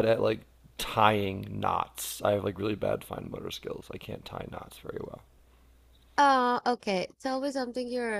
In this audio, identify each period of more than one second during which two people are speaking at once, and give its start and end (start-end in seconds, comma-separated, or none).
none